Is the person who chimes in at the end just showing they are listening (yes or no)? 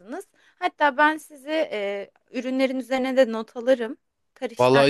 no